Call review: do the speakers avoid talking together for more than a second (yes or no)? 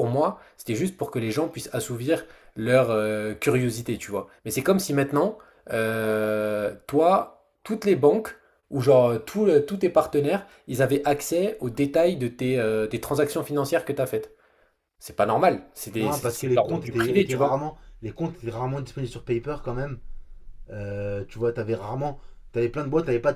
no